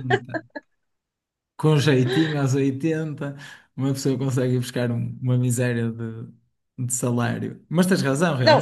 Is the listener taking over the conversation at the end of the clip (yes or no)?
yes